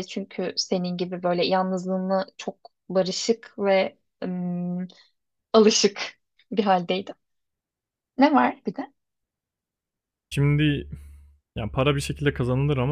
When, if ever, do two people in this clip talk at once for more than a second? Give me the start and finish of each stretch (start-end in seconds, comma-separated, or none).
none